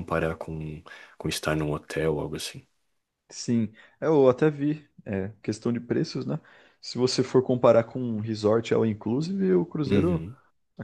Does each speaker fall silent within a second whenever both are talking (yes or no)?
yes